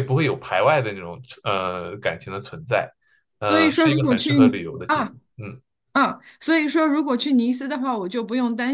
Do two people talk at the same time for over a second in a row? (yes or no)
yes